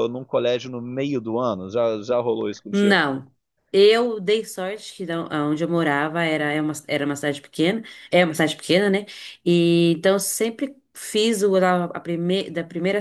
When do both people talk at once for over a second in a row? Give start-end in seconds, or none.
none